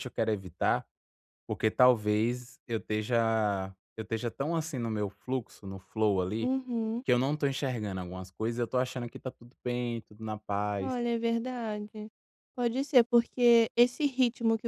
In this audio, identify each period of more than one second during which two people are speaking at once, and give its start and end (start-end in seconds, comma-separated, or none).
none